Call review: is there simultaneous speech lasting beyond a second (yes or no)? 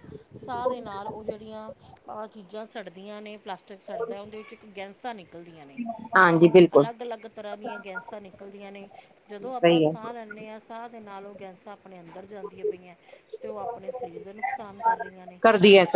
no